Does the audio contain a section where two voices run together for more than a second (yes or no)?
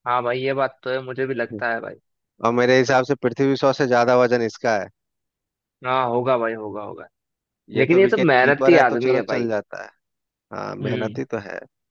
yes